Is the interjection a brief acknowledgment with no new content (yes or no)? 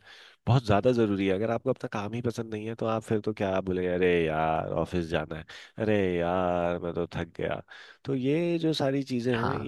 yes